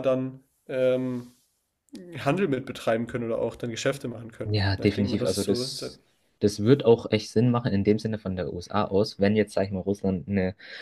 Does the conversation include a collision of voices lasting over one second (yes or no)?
yes